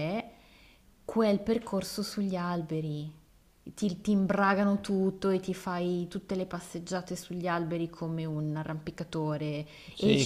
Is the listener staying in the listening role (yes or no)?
no